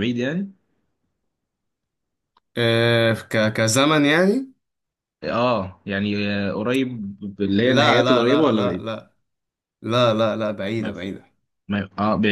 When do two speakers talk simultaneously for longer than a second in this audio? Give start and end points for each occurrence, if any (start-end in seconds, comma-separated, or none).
7.6-8.9